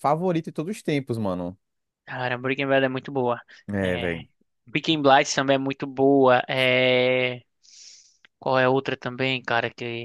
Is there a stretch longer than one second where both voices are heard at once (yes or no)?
no